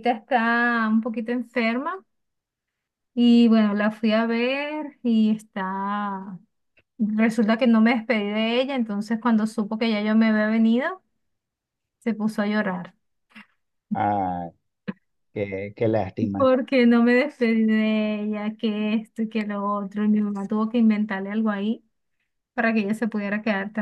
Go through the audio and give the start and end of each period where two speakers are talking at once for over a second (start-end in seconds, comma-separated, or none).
none